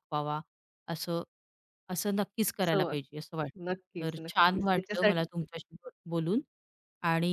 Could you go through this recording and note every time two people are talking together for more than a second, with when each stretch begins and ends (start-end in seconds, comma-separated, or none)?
3.7-5.2